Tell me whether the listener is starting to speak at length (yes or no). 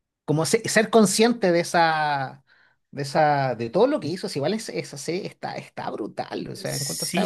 yes